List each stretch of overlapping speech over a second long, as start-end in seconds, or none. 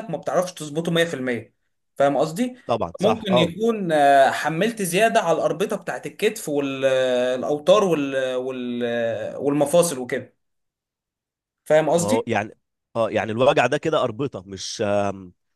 none